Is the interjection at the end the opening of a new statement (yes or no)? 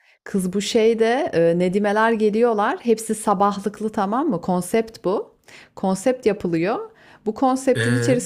no